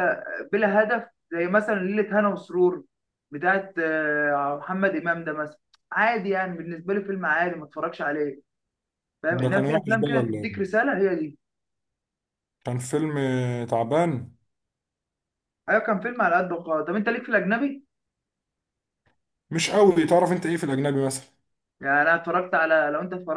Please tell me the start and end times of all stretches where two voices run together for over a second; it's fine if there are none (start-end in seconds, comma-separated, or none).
9.3-10.7